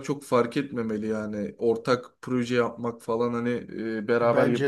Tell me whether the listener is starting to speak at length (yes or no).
no